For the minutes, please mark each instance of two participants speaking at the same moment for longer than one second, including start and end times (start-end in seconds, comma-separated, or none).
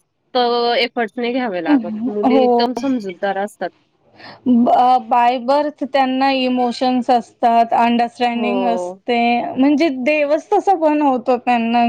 none